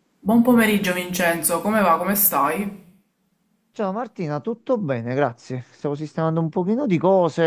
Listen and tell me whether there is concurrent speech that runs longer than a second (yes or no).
no